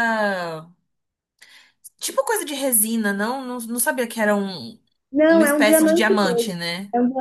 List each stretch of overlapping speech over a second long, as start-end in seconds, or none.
5.3-6.5